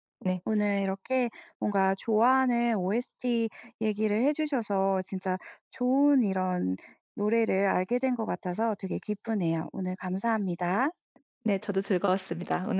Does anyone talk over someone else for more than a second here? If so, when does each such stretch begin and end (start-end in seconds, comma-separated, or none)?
none